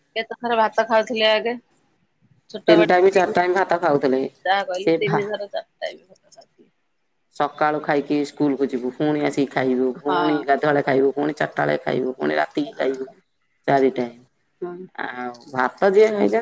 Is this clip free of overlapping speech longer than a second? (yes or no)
no